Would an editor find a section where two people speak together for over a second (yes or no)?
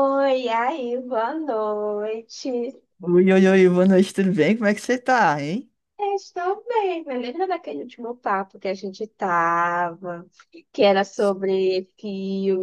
no